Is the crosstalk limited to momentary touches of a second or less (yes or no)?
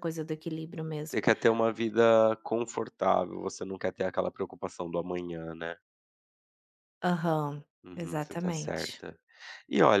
no